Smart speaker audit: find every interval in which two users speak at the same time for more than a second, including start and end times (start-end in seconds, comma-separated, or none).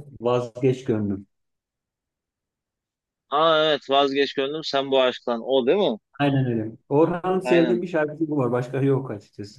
none